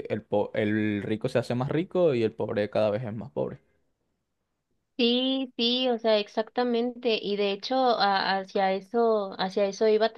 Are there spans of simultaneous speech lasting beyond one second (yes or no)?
no